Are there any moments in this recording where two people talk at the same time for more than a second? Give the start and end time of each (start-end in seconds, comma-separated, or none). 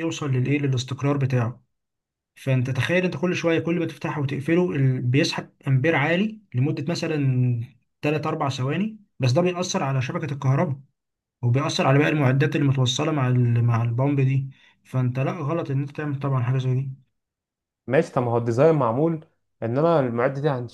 none